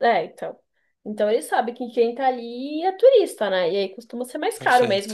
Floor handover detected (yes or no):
no